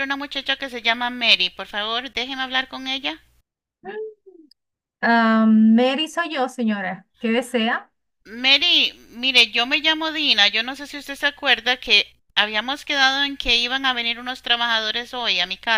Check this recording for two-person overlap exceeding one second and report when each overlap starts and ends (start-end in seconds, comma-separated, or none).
none